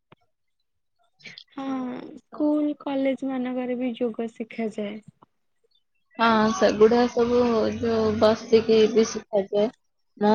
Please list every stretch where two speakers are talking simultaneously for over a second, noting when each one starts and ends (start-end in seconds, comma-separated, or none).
none